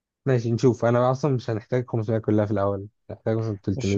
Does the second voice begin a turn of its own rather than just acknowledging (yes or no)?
yes